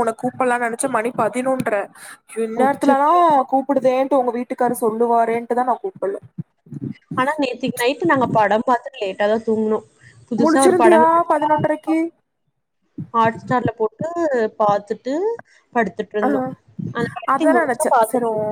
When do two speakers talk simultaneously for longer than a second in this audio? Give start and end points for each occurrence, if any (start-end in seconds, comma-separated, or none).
none